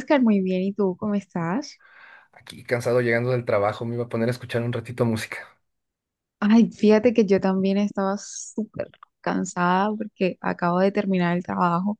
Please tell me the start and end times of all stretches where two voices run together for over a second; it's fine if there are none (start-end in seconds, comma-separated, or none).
none